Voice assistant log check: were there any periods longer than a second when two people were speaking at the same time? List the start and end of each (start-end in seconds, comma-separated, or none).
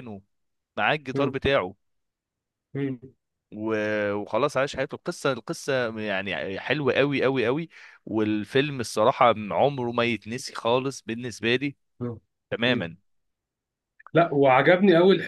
none